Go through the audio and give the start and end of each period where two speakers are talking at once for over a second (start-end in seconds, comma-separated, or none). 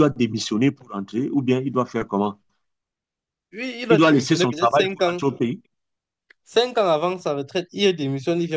3.9-5.2